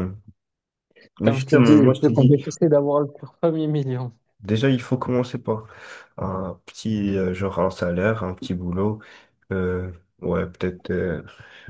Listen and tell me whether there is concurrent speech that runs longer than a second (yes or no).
yes